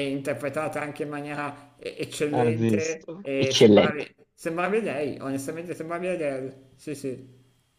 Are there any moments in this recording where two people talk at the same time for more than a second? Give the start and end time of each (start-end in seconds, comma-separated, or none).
2.3-4.1